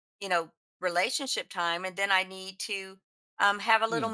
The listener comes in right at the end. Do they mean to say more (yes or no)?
no